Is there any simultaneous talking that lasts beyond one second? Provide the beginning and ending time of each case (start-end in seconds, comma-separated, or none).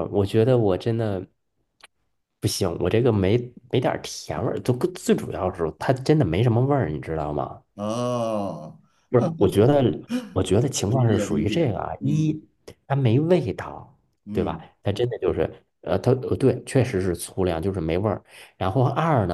10.8-12.4